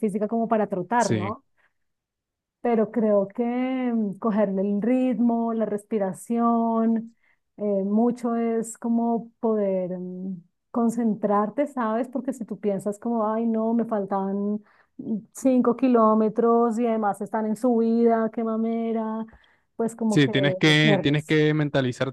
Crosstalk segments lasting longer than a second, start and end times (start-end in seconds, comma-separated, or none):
20.1-21.4